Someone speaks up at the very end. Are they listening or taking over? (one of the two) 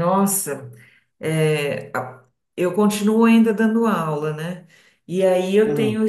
listening